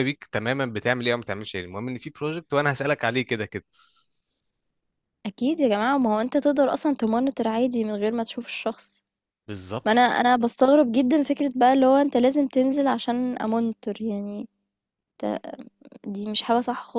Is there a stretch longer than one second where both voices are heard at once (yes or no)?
no